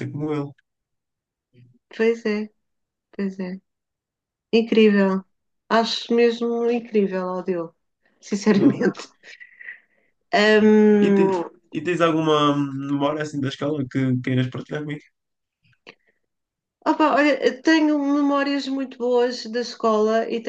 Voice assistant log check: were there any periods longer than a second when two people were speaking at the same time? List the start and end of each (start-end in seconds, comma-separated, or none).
none